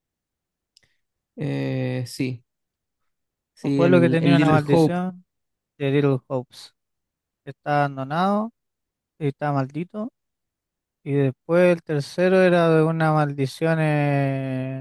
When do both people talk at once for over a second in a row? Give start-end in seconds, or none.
3.6-5.0